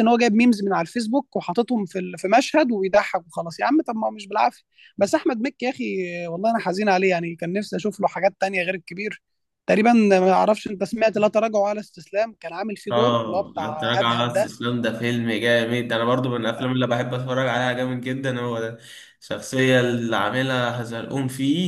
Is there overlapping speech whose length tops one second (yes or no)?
yes